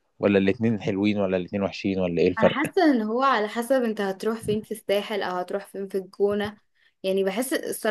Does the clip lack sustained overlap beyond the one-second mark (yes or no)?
yes